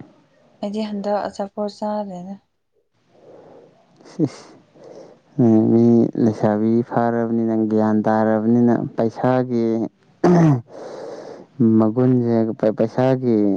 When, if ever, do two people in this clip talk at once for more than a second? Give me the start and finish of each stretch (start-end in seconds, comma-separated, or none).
none